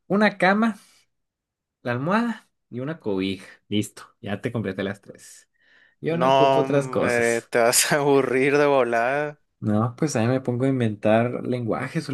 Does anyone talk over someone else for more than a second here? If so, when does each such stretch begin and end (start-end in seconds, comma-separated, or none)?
6.1-7.5